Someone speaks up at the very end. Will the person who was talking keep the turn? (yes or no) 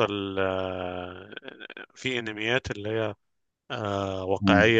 yes